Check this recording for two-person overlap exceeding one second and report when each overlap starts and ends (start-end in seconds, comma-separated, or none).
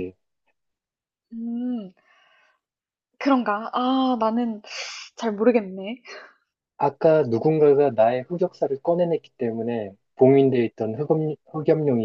none